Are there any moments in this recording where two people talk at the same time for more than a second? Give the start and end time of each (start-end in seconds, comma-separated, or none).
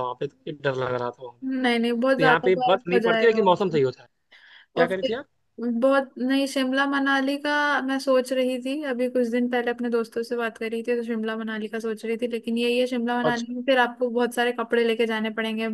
2.2-3.8